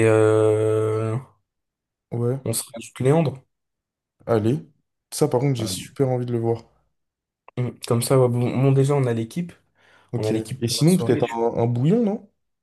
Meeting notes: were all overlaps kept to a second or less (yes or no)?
no